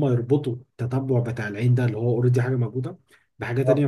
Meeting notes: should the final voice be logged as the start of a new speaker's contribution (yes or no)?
no